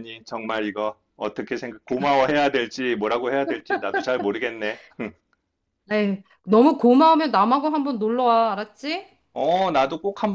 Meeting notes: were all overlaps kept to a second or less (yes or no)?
yes